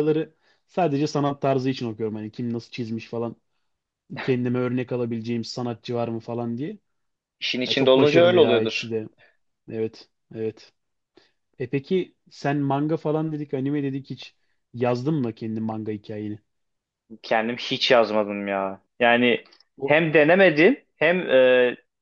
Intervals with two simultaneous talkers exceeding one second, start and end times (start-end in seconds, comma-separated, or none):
7.6-8.9